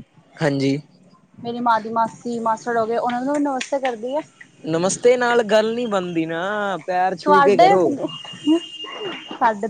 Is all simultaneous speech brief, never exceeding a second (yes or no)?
yes